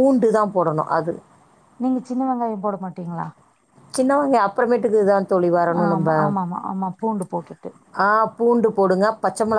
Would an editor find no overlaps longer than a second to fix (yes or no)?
yes